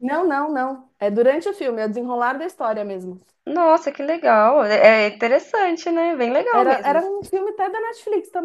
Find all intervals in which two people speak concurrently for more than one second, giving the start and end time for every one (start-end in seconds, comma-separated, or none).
none